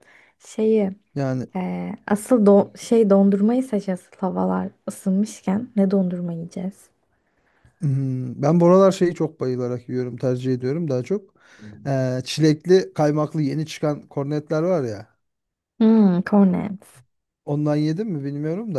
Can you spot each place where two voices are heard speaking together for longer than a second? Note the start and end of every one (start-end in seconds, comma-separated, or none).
none